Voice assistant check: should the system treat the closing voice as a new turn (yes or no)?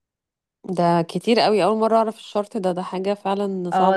yes